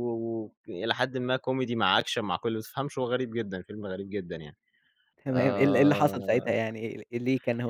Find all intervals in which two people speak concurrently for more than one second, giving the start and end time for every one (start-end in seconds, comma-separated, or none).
5.3-6.6